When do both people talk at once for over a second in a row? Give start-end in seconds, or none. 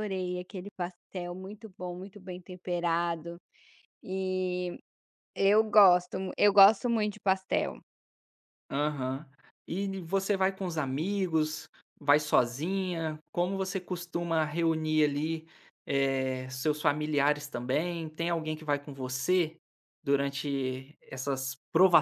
none